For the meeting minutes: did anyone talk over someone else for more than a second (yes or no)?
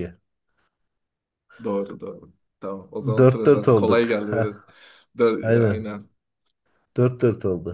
yes